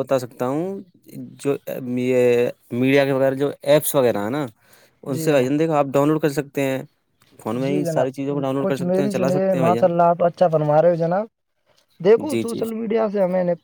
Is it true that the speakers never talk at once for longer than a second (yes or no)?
no